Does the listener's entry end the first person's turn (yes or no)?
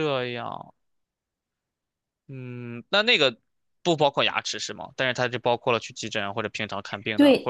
yes